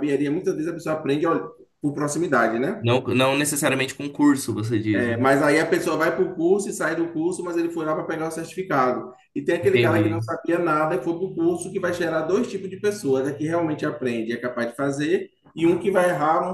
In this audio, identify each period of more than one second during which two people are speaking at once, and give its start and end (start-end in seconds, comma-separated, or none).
none